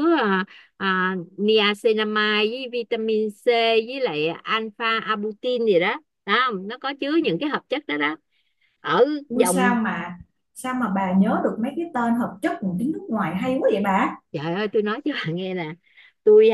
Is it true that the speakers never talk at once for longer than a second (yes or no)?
yes